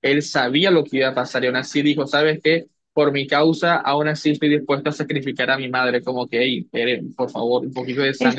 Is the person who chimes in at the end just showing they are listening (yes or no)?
no